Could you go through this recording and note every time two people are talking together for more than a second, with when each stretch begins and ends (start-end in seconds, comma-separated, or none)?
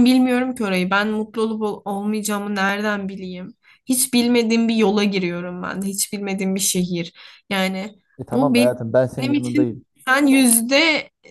8.3-9.8